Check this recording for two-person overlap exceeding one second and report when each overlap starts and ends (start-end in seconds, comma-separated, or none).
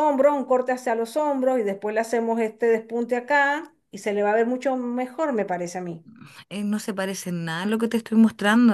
none